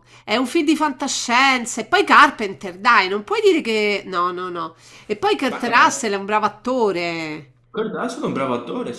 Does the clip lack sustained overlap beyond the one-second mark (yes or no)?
yes